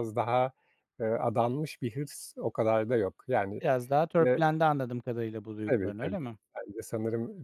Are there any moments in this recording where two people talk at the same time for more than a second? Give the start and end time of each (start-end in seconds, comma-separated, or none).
none